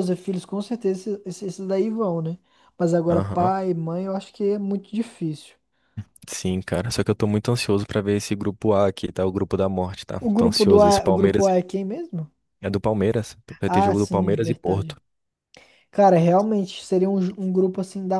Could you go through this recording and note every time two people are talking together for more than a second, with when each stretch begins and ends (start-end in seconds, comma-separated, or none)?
10.2-11.5, 13.6-15.0